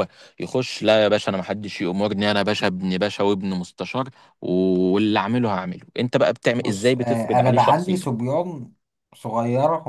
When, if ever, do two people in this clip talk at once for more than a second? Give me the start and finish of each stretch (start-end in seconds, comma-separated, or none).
6.6-8.1